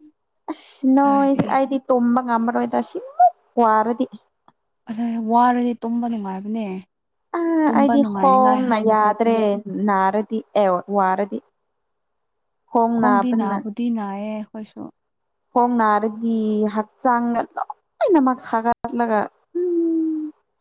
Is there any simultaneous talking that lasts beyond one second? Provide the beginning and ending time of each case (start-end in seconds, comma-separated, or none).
7.8-9.4